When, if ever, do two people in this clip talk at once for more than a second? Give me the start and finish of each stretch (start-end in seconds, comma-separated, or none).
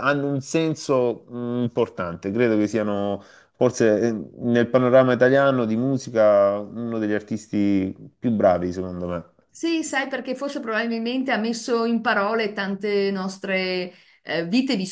none